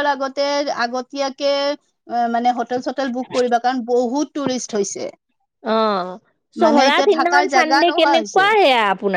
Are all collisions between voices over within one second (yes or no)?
no